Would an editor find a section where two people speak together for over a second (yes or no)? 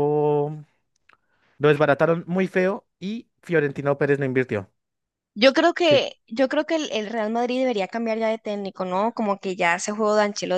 no